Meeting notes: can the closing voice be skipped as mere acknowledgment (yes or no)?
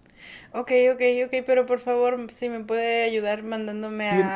no